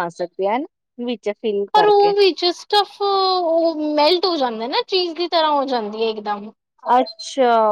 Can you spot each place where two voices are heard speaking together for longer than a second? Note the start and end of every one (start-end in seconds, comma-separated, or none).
none